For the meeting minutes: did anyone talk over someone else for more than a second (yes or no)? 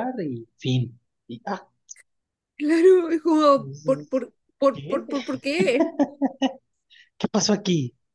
no